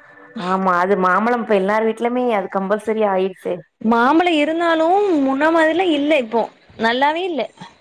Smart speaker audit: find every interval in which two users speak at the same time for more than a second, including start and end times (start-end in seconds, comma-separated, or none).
none